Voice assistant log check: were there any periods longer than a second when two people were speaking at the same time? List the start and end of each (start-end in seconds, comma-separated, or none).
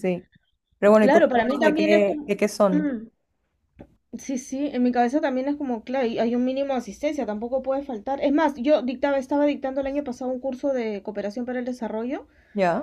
1.0-2.9